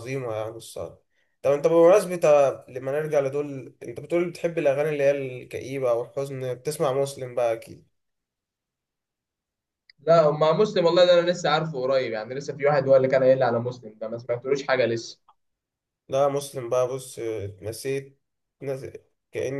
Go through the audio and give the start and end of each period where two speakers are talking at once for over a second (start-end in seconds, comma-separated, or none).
none